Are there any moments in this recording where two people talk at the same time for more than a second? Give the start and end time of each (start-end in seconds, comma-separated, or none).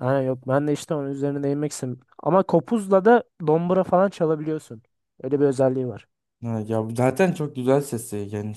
none